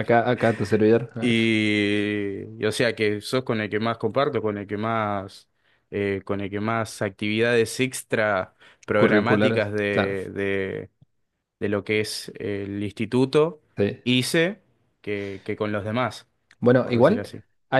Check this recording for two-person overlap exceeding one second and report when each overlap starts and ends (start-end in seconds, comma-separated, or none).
8.9-10.2